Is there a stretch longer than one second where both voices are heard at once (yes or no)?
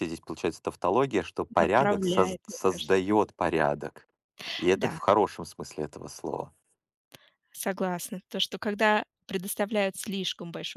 yes